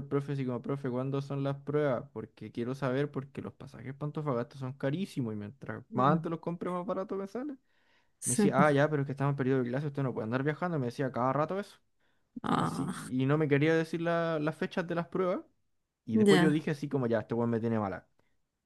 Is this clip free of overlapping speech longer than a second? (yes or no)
yes